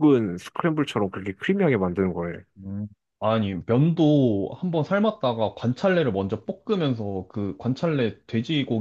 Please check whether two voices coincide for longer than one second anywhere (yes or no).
no